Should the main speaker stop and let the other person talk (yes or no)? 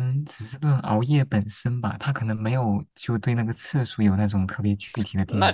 yes